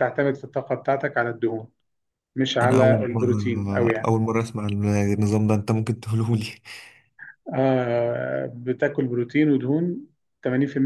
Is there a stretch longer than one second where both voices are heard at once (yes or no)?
yes